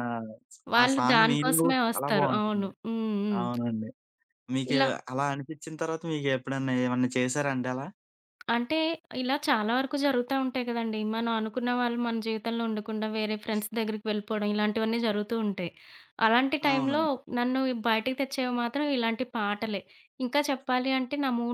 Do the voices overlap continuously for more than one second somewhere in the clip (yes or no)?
yes